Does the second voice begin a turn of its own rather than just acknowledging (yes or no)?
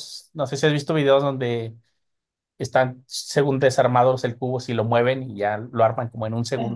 yes